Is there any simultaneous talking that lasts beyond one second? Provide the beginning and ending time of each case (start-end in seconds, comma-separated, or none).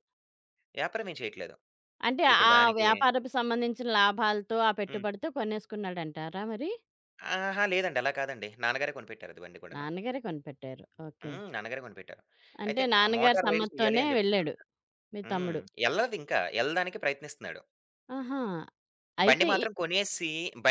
12.7-14.5